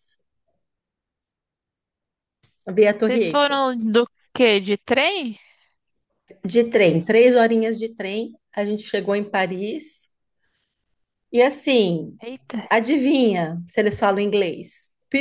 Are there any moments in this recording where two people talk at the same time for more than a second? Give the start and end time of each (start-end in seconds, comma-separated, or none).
none